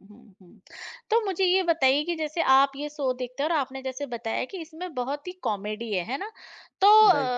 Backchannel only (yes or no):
yes